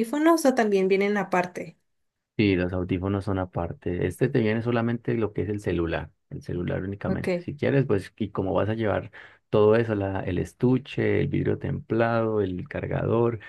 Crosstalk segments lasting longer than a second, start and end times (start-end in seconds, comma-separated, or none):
none